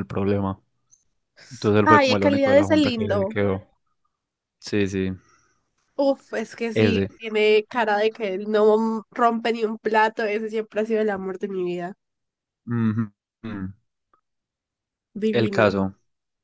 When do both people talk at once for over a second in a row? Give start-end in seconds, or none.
1.8-3.4